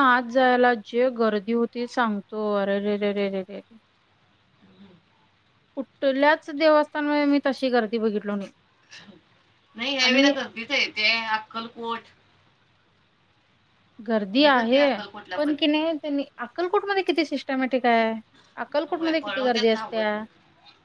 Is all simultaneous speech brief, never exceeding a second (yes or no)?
no